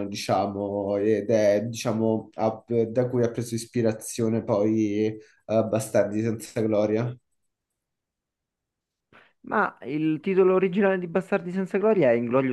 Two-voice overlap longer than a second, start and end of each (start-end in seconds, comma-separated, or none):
none